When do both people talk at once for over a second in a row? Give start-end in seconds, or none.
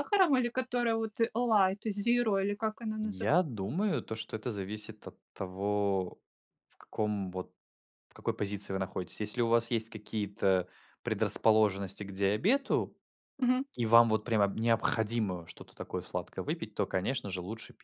none